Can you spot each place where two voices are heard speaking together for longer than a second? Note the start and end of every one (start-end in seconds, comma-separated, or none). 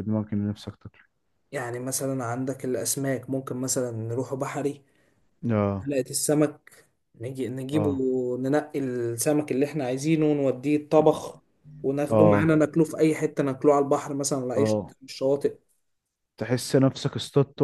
none